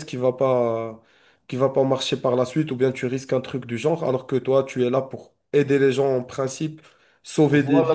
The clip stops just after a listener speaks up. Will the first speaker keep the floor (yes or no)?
no